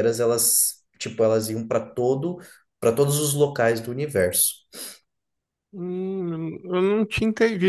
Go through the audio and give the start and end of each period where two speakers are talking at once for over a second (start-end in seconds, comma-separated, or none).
none